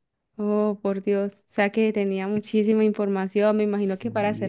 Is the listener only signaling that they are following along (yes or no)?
no